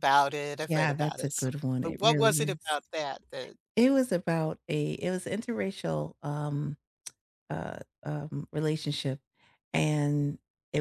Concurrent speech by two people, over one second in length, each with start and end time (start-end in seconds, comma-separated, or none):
0.7-2.8